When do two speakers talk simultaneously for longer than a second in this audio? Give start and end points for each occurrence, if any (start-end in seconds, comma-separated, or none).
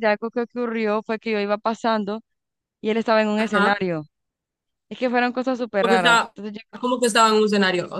none